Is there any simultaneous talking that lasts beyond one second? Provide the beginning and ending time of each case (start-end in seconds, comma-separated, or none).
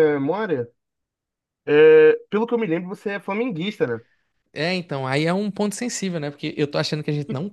none